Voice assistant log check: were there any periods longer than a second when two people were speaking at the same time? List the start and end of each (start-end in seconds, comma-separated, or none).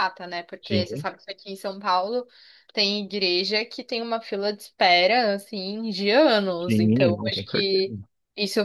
6.6-7.8